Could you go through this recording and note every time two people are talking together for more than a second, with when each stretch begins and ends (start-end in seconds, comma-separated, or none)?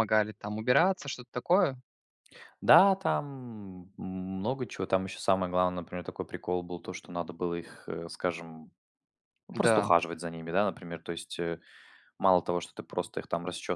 none